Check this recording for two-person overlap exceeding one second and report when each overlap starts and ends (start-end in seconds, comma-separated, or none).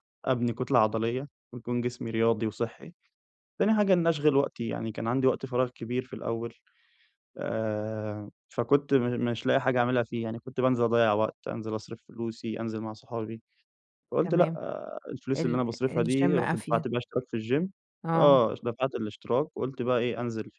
15.4-16.9